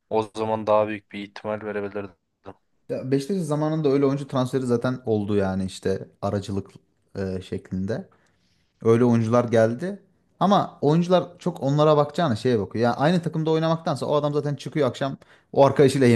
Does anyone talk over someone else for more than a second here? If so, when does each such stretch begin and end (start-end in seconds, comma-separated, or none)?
none